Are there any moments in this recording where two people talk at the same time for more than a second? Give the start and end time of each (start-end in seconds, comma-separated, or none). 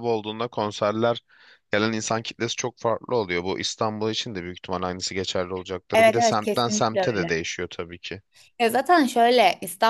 5.9-7.3